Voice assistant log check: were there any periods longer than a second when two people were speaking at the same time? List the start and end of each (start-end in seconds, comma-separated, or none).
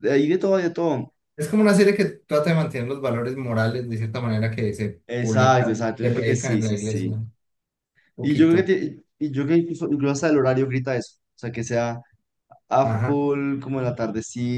5.1-7.2